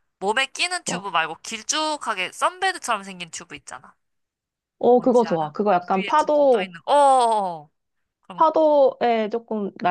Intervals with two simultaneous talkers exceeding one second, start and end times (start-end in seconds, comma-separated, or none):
5.0-6.7